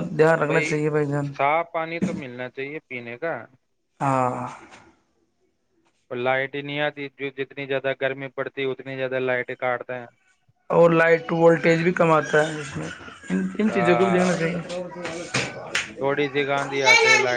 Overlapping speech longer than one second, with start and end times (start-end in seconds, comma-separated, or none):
none